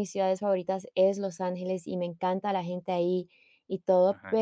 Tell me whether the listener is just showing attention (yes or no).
yes